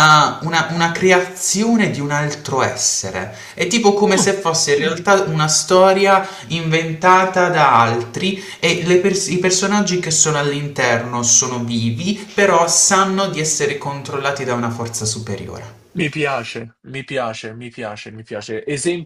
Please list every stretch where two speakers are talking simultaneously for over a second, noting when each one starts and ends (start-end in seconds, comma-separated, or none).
none